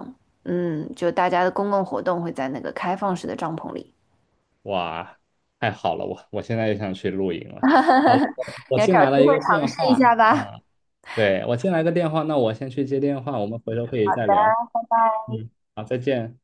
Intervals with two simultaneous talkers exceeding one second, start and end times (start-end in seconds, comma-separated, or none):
8.8-10.5